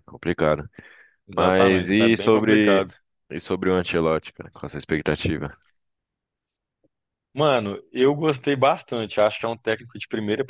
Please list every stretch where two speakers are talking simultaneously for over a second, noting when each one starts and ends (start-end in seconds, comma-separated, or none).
1.4-2.9